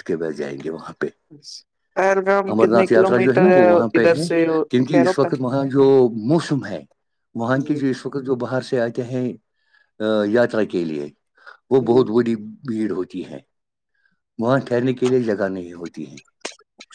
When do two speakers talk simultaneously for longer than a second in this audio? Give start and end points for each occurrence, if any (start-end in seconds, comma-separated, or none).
1.9-4.3